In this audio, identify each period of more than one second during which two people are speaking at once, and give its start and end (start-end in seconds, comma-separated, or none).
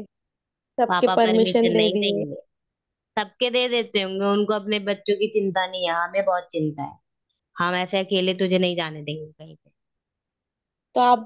0.9-2.2